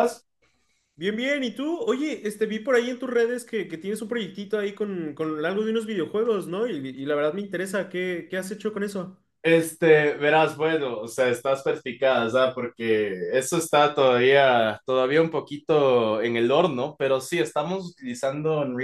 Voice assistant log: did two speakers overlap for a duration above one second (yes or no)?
no